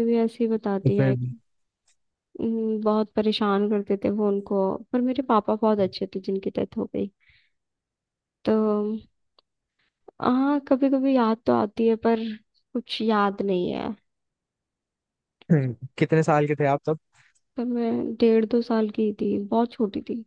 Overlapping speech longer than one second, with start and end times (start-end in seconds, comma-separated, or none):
none